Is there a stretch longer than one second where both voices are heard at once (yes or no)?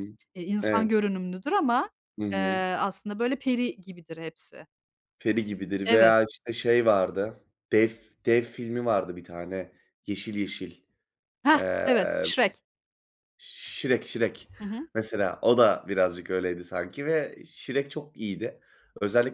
no